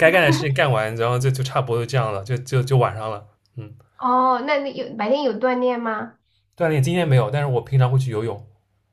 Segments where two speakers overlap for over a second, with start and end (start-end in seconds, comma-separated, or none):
none